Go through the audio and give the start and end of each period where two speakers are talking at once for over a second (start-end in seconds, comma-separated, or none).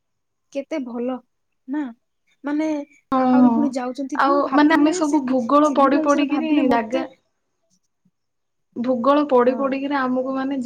4.2-7.0